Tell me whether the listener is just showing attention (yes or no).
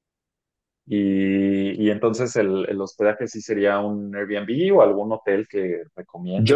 no